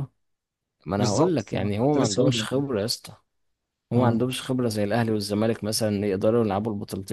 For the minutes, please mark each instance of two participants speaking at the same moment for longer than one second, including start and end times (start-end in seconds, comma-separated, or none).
1.0-2.4